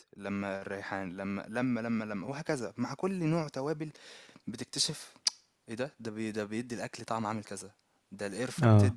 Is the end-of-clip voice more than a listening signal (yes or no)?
no